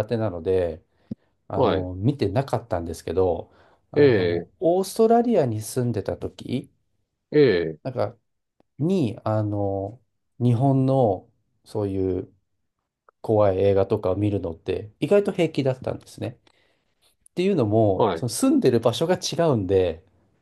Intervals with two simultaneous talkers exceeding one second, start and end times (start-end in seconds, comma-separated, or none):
none